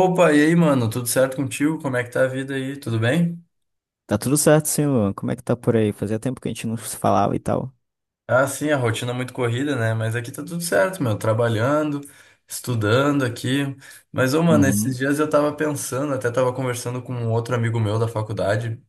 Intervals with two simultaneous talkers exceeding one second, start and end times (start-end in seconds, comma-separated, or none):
none